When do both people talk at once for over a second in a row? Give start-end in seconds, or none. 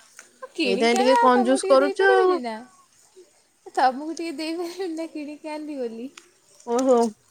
0.7-2.3